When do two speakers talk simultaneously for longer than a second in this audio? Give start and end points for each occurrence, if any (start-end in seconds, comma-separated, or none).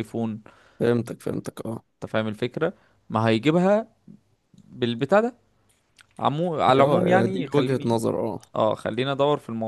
6.7-8.0